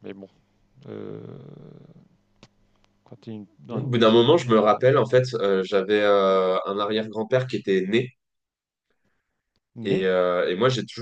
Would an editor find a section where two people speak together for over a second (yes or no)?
yes